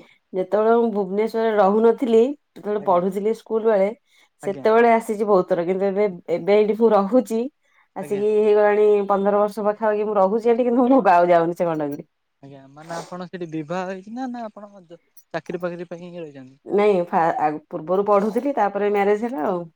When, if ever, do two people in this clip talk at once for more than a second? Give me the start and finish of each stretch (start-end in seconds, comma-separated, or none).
none